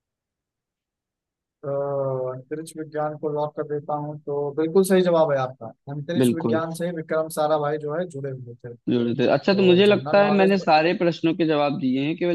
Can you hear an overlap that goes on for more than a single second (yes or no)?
yes